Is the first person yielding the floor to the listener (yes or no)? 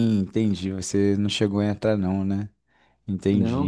yes